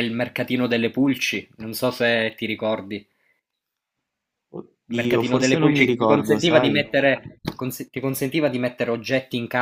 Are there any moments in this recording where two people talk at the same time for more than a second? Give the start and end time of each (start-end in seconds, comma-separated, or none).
4.9-6.9